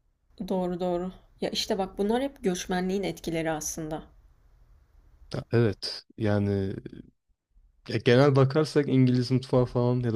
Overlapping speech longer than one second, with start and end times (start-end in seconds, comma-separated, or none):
none